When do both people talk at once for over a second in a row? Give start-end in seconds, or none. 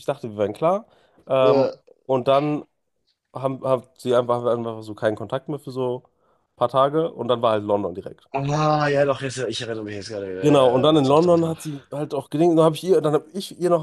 10.4-11.6